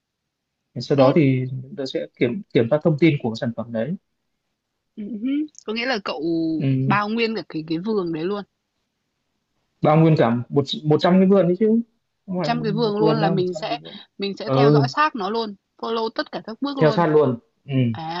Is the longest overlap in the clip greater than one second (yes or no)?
yes